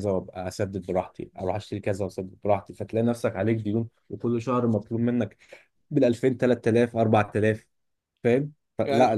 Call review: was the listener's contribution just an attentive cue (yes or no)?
yes